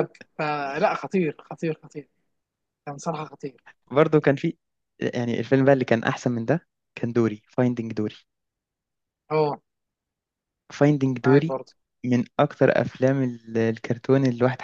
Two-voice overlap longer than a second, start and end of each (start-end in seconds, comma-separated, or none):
none